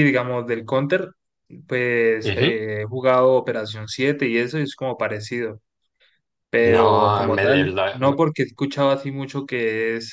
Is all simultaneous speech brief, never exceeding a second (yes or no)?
no